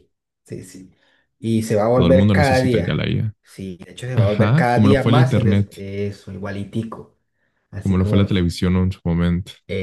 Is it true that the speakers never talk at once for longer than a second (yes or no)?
no